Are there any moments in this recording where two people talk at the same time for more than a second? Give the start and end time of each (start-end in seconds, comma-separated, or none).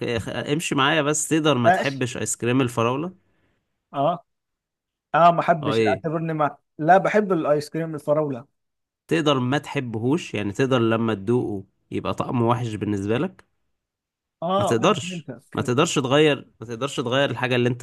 14.6-15.9